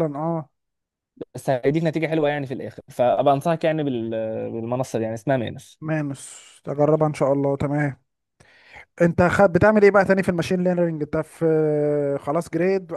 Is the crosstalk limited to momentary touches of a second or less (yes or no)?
yes